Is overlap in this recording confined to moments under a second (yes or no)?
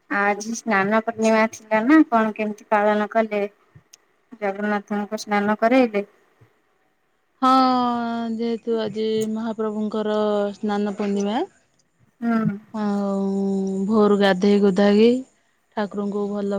yes